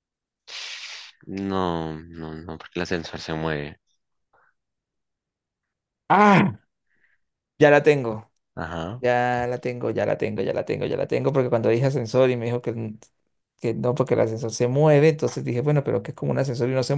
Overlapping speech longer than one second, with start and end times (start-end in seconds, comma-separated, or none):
none